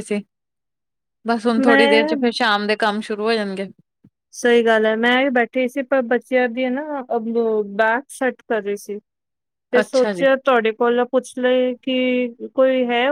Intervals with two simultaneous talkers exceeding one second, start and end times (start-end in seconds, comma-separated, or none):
none